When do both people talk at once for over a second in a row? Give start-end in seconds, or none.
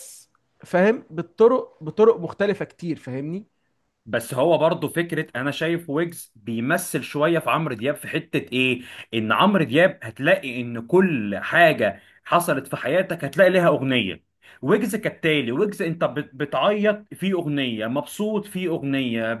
none